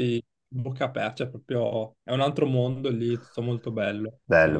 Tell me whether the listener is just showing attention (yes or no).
no